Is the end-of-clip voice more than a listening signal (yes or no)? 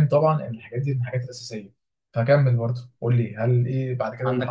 yes